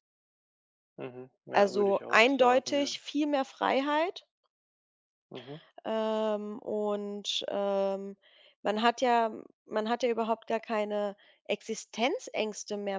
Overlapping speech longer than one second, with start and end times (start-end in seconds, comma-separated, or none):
1.5-2.9